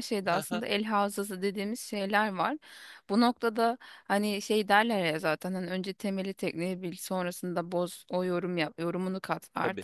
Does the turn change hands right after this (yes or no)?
no